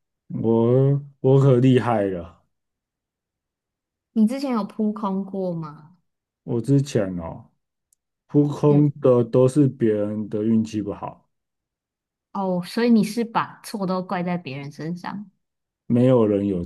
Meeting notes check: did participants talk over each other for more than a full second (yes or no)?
no